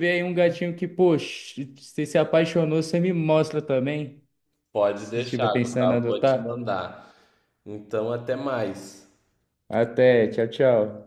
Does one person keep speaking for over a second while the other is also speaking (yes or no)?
yes